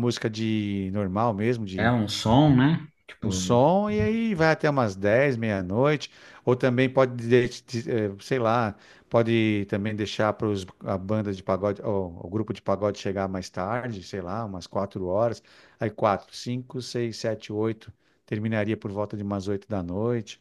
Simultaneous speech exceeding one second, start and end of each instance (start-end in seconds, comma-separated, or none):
none